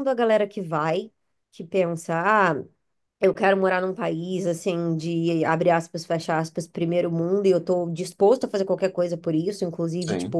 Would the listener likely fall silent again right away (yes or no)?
yes